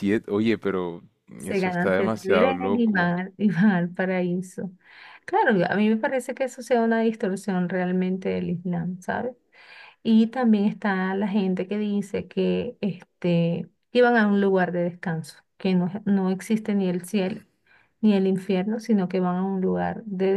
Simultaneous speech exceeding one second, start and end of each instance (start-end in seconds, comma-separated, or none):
1.4-3.1